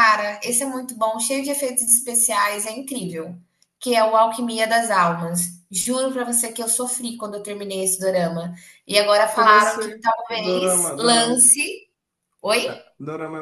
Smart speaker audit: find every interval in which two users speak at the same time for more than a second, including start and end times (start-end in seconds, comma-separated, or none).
9.3-11.4